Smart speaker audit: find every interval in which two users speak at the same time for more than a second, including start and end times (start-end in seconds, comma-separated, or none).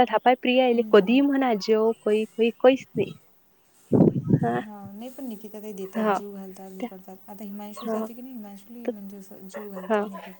none